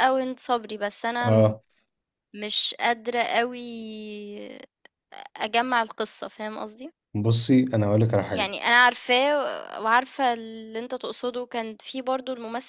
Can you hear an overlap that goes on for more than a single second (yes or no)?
no